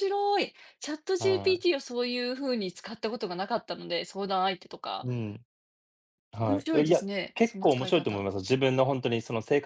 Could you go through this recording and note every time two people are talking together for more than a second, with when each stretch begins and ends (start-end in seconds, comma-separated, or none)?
6.5-8.3